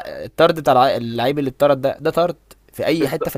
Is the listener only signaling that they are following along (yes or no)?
no